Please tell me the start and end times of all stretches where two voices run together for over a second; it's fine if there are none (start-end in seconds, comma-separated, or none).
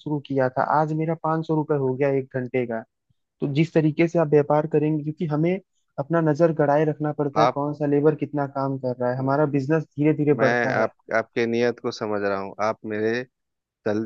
none